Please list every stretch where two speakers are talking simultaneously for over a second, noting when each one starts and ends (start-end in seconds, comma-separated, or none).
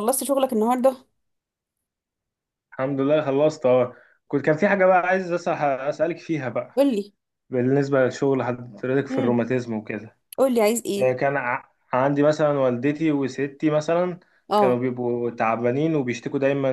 none